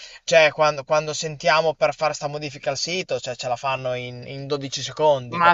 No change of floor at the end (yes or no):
no